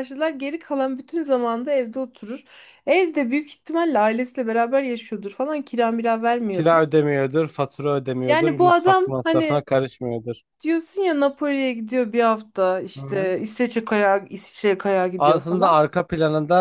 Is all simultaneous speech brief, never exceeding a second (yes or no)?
no